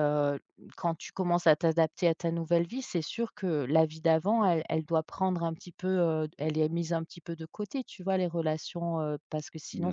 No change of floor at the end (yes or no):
yes